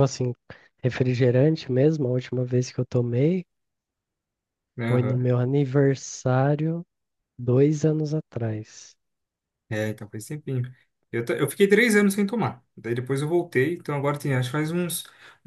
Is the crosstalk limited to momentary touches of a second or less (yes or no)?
yes